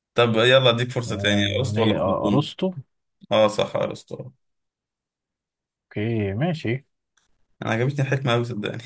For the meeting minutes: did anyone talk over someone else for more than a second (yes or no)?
yes